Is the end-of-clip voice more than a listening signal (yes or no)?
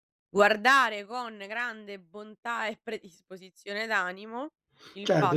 yes